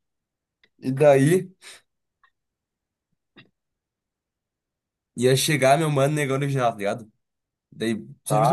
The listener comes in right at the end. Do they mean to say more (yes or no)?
no